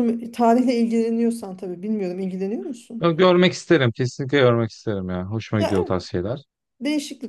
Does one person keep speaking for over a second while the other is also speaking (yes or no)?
no